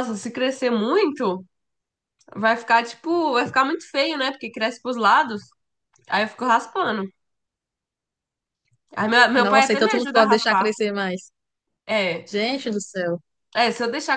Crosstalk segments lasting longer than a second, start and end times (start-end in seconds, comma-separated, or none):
9.3-10.7